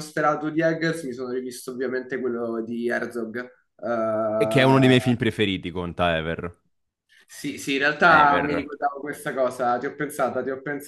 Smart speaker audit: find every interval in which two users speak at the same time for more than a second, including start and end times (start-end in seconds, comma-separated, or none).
none